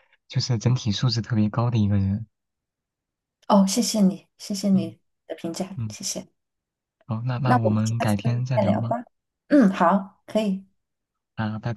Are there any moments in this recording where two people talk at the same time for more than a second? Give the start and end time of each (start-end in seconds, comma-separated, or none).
7.4-8.9